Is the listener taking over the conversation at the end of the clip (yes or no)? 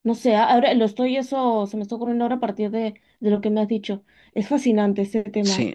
yes